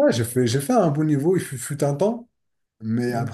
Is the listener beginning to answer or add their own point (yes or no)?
no